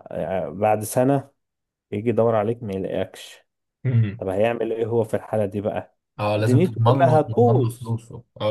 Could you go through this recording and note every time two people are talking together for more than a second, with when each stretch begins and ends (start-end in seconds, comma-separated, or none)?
6.4-7.9